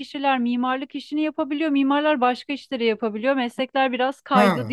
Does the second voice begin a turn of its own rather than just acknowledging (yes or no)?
yes